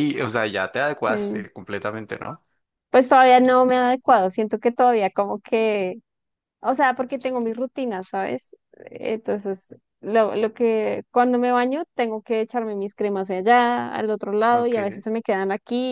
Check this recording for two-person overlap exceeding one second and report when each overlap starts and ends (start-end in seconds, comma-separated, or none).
none